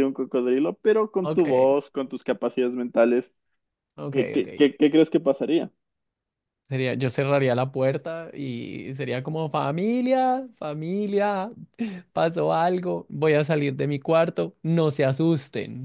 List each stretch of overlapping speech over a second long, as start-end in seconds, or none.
none